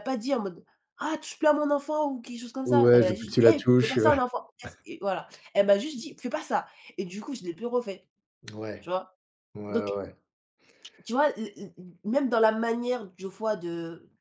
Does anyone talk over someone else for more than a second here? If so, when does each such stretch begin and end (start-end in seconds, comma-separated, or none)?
2.6-4.0